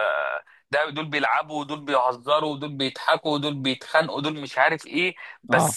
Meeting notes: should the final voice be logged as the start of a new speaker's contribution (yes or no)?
no